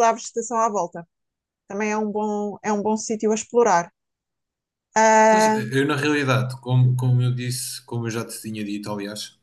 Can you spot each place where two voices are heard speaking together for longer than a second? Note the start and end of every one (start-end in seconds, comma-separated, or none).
none